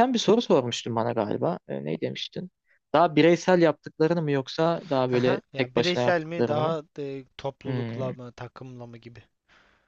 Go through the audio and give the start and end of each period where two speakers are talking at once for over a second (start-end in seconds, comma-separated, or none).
5.1-6.8